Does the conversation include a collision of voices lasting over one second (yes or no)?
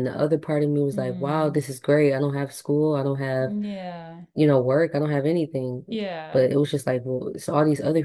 no